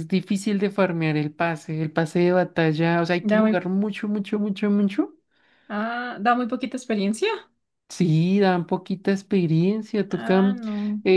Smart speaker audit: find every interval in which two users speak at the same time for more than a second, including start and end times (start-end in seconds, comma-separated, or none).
none